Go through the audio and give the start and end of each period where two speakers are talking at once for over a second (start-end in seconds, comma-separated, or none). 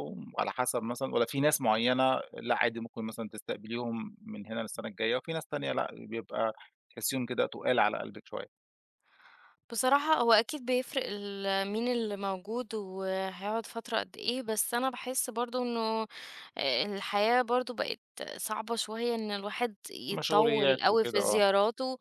20.1-21.4